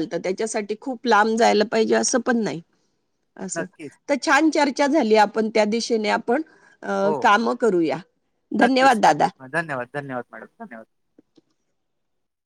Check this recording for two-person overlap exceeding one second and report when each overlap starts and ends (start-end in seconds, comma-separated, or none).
none